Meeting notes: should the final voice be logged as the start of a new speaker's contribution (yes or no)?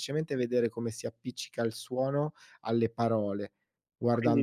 yes